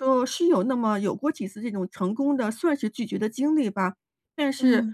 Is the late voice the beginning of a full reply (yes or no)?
no